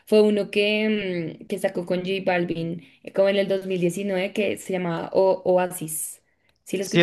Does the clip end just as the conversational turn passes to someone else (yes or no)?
yes